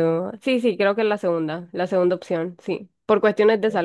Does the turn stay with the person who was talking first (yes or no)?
yes